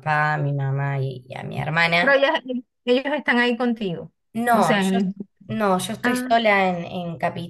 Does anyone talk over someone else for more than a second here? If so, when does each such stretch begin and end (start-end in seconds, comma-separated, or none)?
none